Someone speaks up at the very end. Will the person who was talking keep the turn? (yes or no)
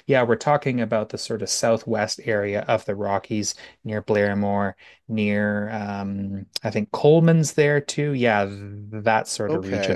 no